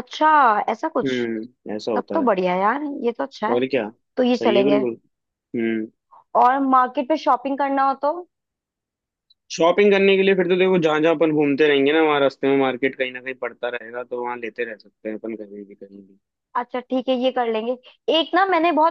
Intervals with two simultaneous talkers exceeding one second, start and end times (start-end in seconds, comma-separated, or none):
none